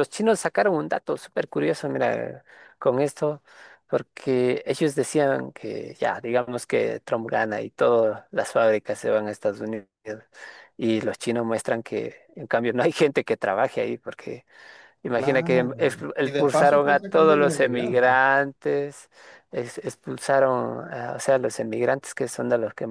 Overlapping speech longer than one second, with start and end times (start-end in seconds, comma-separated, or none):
15.1-18.2